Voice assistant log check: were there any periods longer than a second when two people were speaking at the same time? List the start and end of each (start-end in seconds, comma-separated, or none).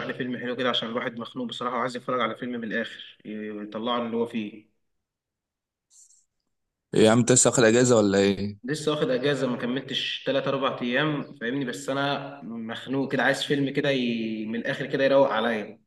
none